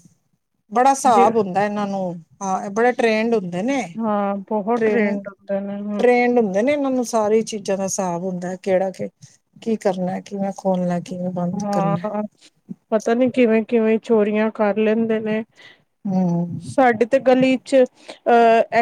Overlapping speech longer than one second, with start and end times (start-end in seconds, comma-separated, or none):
none